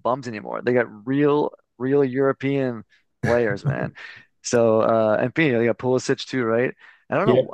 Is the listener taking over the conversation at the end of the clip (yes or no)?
no